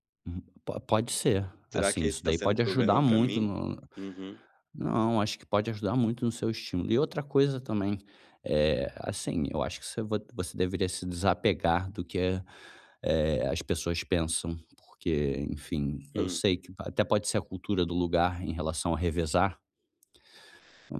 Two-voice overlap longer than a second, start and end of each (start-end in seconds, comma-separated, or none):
1.7-3.5